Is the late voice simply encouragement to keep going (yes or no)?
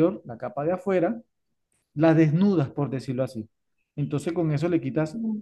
yes